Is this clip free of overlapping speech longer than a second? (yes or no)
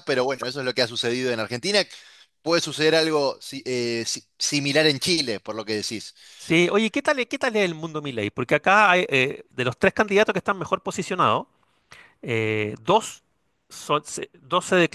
yes